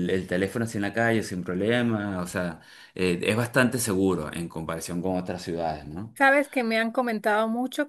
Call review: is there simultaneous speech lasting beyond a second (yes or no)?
no